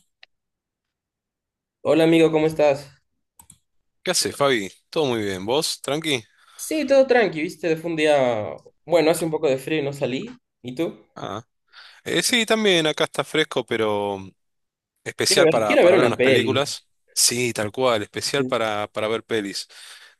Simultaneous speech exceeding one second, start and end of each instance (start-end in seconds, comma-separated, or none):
15.3-16.6